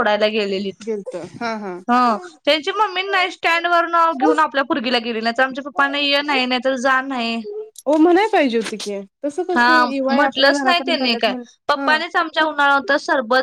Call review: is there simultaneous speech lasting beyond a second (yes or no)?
yes